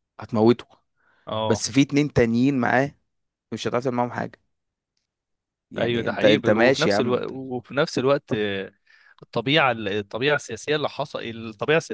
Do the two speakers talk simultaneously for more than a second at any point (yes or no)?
yes